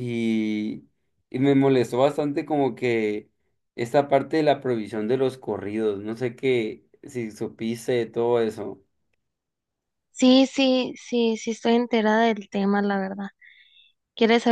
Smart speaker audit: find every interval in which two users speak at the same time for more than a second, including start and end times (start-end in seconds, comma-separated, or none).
none